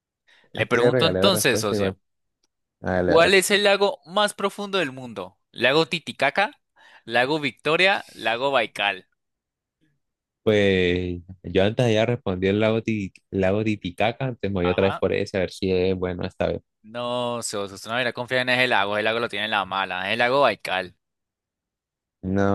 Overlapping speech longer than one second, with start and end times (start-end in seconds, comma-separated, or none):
0.5-1.9